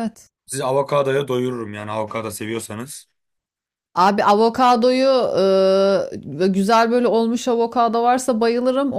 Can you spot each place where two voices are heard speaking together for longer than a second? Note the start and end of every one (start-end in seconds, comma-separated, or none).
none